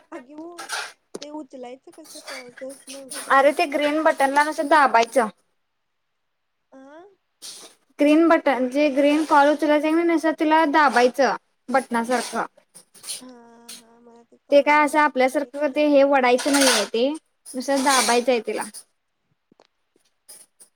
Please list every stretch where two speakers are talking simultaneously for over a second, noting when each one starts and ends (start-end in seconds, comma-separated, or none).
14.5-16.7